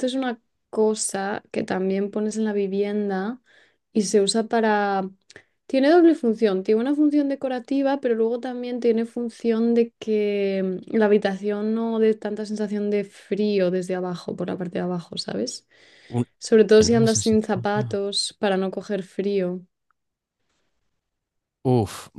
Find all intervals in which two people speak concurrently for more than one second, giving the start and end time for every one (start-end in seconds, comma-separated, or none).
16.7-18.0